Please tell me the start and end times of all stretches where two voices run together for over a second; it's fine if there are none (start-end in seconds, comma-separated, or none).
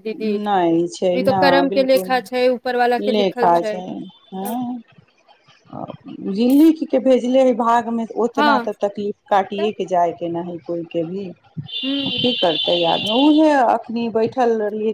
1.2-3.5